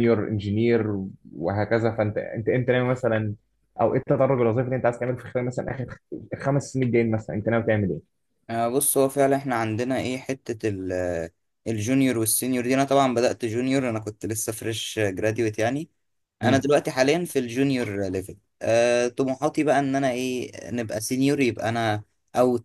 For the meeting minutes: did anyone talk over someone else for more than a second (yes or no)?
no